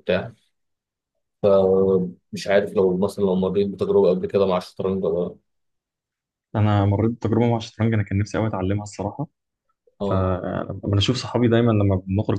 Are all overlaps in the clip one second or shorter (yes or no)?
yes